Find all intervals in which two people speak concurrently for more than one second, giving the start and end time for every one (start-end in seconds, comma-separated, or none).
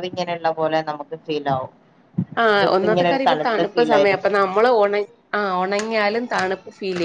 2.6-4.3